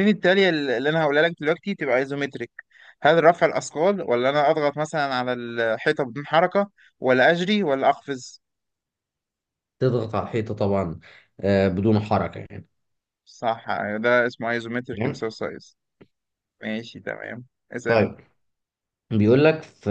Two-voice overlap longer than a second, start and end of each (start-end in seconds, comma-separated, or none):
none